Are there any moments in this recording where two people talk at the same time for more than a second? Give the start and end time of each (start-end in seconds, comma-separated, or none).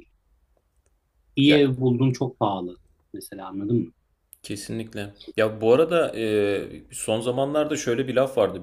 none